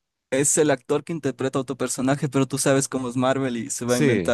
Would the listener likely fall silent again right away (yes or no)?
yes